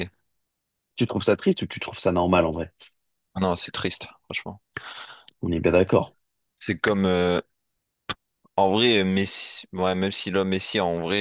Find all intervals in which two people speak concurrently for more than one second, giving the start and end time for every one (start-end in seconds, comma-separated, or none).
none